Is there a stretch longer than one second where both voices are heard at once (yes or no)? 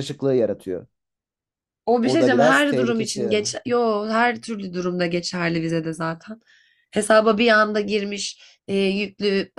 yes